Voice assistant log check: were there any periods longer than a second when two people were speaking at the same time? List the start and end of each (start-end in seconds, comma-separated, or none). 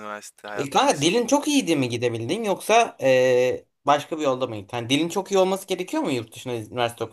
0.5-2.0